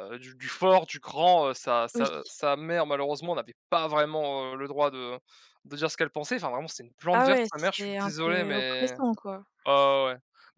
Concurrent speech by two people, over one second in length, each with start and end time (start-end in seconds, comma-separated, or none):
7.1-8.9